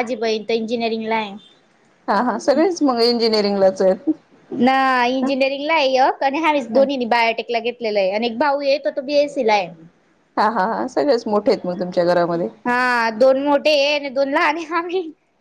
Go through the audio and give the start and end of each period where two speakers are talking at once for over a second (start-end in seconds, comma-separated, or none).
none